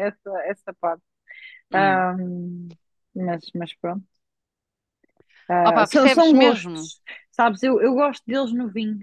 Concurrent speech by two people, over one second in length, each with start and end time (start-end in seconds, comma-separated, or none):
5.6-6.9